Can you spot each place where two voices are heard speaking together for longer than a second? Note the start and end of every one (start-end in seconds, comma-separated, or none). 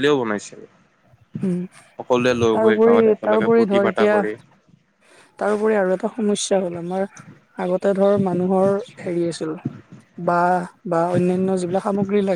2.0-4.2